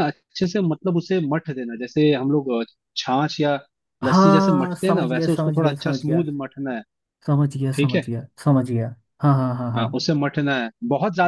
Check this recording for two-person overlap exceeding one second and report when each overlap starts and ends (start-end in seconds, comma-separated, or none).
4.0-6.2